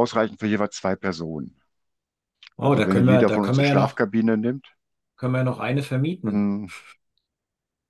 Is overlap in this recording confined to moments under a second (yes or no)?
no